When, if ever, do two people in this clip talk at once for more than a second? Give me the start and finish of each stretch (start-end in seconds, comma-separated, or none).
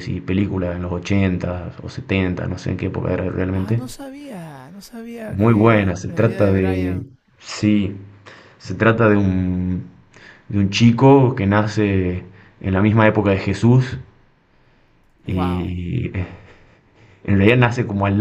5.3-7.1